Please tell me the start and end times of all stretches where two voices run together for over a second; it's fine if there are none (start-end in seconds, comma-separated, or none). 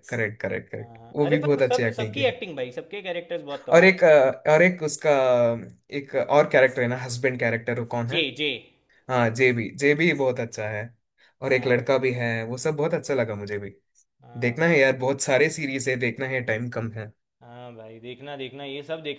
0.8-2.4